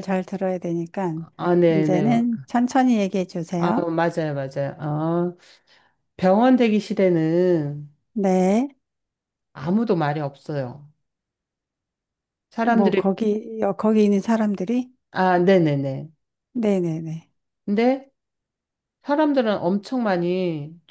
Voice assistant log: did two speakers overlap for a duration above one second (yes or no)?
no